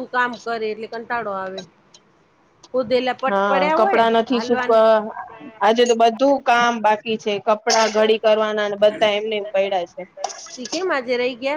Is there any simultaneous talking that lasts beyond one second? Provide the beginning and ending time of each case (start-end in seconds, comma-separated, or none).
none